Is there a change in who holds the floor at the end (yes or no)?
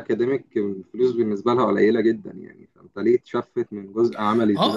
yes